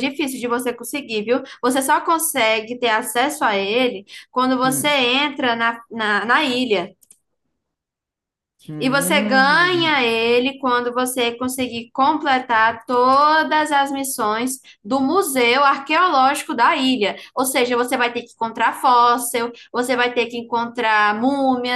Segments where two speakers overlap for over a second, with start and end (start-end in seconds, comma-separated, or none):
8.8-10.0